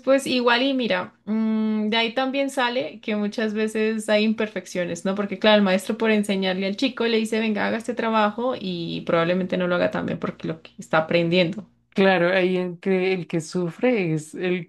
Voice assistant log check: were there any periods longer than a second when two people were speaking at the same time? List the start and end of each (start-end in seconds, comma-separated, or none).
none